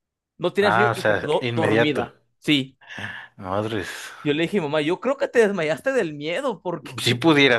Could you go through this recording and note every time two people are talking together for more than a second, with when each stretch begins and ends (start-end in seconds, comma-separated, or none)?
0.6-2.1